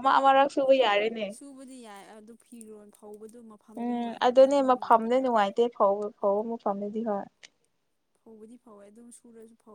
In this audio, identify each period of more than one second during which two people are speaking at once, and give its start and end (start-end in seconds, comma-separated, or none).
none